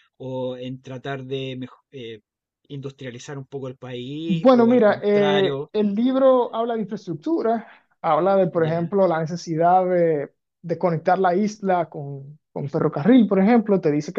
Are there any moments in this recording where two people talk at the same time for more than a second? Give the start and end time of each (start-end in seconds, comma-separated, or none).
4.3-5.7